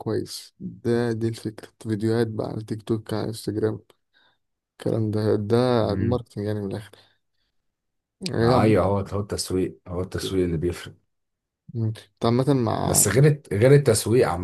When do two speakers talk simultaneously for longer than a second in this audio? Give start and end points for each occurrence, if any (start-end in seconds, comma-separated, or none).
none